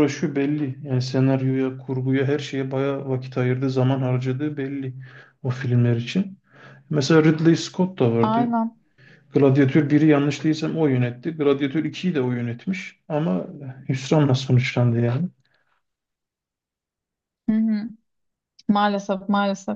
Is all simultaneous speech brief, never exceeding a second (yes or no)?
yes